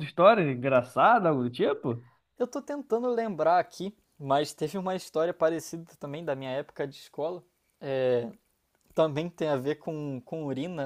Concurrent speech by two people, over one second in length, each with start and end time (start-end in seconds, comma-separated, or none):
none